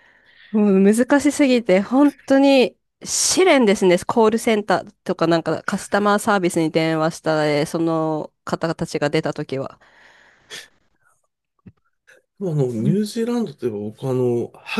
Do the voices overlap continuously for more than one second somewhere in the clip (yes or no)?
no